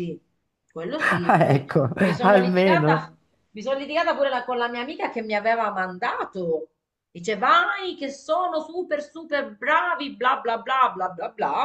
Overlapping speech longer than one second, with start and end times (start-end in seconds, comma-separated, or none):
1.0-3.1